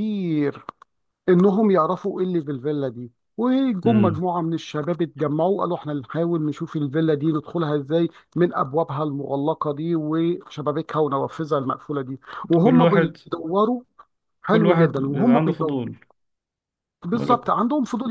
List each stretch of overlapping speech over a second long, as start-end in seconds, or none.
14.5-15.8